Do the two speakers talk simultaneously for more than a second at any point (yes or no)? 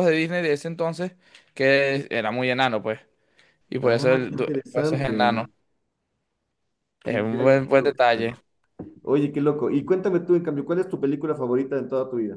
yes